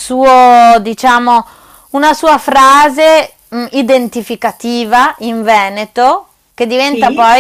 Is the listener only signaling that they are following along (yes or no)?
yes